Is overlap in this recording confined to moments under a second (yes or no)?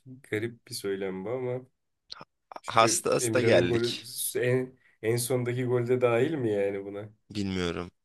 no